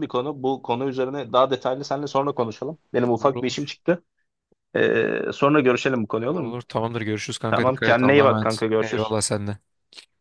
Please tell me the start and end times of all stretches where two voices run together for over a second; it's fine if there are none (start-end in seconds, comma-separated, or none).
7.5-9.1